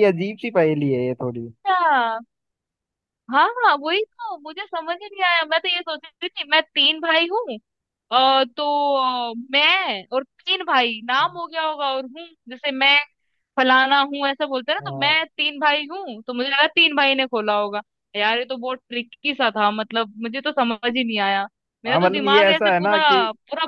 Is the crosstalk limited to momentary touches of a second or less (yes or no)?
no